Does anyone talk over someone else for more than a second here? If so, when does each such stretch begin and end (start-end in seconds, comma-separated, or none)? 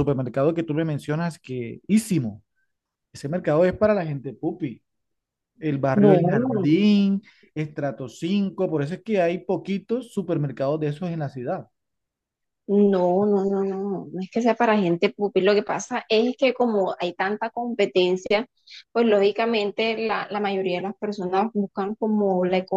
none